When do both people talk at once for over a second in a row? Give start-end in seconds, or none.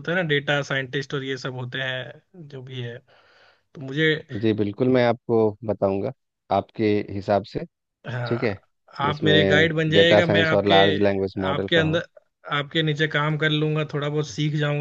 9.1-10.7